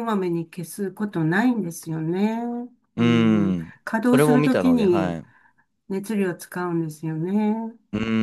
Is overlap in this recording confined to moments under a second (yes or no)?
no